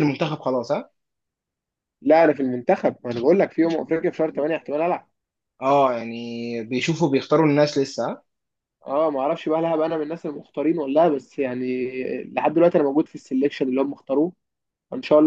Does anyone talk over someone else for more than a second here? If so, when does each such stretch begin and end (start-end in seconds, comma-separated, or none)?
none